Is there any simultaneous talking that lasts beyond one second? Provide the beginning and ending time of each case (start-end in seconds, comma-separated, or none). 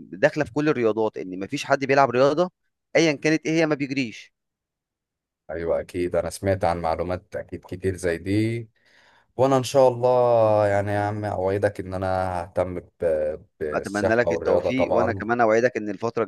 13.7-15.3